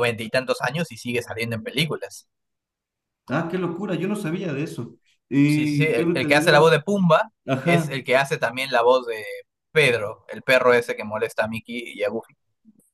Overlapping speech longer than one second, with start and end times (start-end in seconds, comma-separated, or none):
5.4-6.7